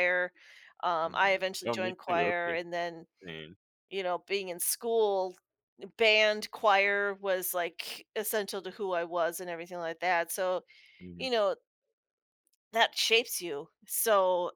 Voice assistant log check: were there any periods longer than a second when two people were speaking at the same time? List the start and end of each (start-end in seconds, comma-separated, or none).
1.0-2.6